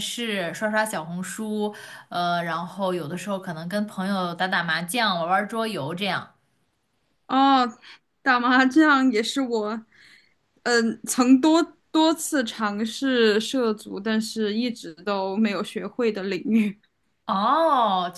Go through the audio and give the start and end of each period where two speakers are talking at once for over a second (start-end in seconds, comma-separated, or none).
none